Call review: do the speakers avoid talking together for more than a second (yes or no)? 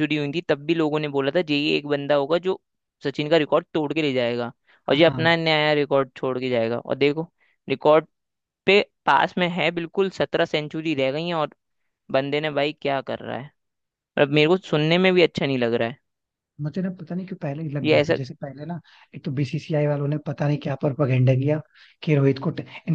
yes